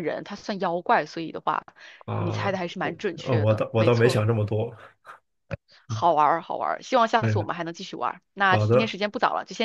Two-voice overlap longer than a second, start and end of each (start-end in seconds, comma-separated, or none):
2.1-4.2